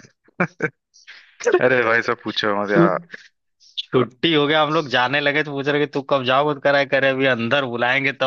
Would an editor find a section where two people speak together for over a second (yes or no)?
no